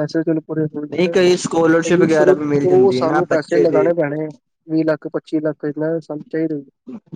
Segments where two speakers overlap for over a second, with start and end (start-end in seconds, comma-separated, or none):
2.1-3.9